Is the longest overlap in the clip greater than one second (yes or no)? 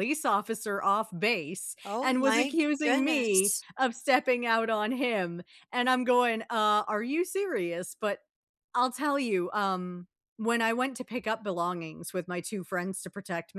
yes